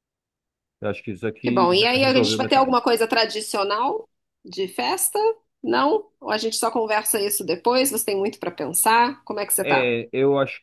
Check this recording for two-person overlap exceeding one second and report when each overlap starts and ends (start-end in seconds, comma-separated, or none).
1.4-2.8